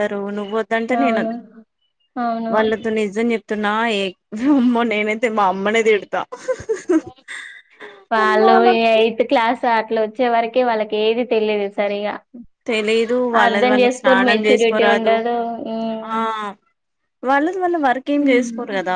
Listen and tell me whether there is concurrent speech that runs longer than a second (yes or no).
yes